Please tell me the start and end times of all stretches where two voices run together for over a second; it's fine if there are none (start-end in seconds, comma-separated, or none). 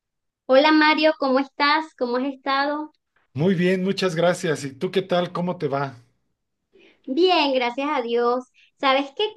none